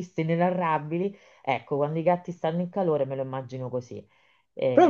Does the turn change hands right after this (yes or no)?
yes